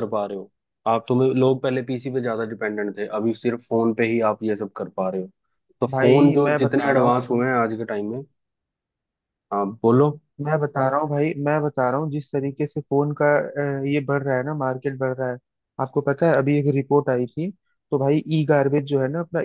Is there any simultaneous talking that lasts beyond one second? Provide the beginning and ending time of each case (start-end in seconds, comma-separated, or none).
5.9-7.3